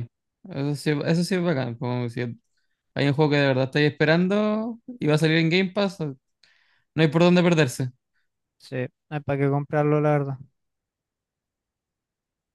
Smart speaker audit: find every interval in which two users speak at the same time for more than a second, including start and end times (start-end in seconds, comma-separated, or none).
none